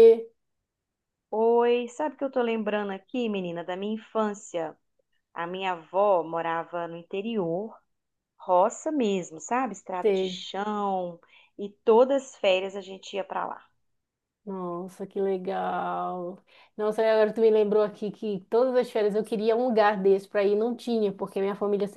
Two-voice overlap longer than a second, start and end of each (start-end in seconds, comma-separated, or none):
none